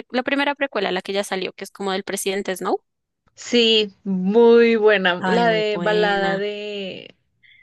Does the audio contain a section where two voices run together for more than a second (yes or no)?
yes